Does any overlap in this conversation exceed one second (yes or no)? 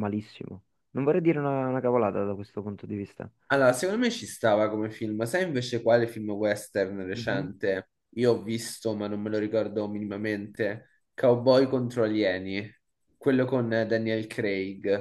no